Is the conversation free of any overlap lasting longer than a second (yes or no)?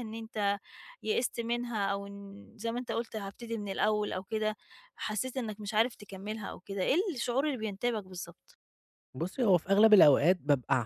yes